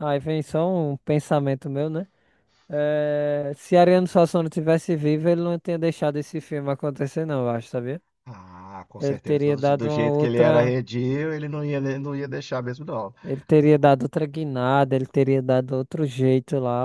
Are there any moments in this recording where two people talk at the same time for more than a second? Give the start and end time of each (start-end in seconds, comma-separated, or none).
9.0-10.8